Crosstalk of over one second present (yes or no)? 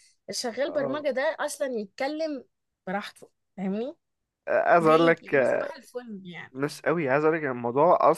no